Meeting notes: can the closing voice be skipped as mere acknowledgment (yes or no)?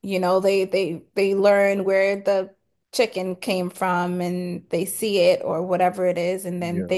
yes